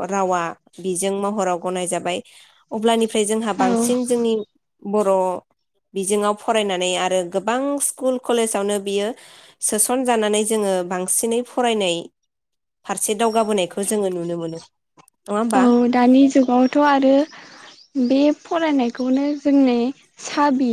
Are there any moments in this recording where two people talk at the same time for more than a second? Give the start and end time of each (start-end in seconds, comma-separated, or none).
none